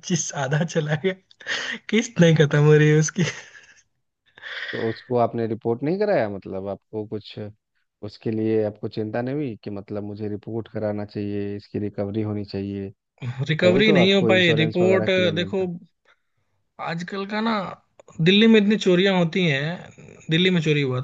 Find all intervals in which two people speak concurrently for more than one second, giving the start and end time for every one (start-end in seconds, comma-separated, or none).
13.6-15.6